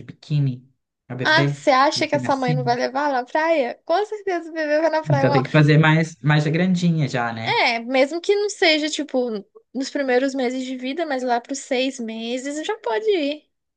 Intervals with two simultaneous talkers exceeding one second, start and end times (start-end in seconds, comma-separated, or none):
1.2-2.8